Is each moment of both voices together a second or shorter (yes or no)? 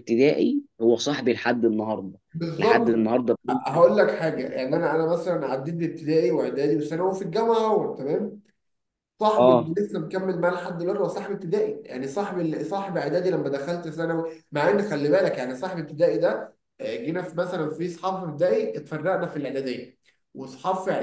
yes